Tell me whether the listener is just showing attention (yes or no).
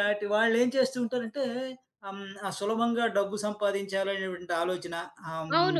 no